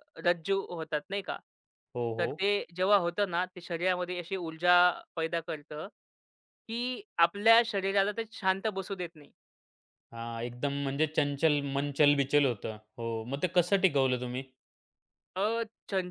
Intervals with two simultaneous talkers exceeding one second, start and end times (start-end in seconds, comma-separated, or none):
none